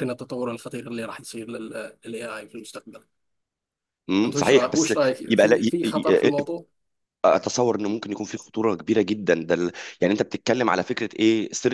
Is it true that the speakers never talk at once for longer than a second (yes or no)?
no